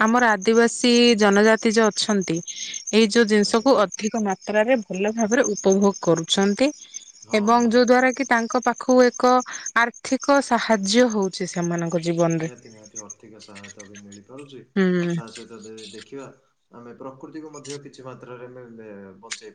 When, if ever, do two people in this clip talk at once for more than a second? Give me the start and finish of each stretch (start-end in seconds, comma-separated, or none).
none